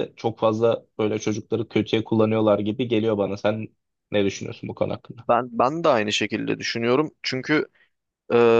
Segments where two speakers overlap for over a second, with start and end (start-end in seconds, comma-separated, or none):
none